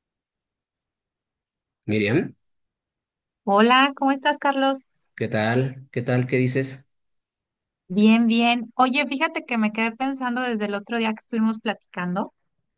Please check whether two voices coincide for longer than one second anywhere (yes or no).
no